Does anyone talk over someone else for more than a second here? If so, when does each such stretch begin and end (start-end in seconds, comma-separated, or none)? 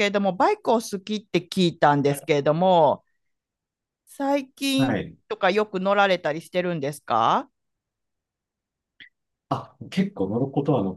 none